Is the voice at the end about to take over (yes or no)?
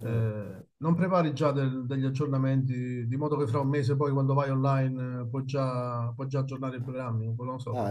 yes